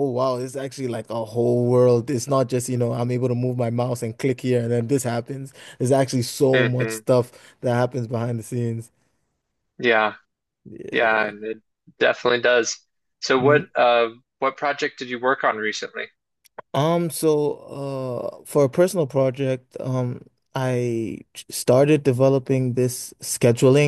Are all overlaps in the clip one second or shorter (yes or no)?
yes